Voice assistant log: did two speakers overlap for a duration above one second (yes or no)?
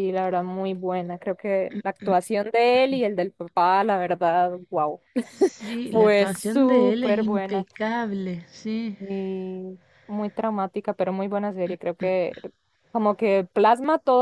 yes